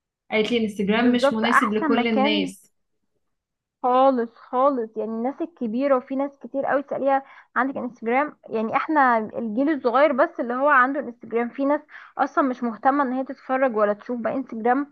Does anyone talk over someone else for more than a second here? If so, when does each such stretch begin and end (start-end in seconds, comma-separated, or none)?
1.0-2.5